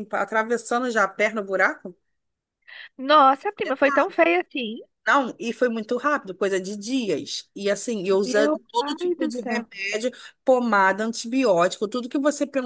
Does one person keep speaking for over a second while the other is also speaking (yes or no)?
yes